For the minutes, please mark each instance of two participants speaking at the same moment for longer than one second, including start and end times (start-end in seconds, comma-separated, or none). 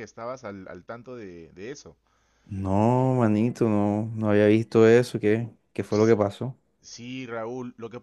none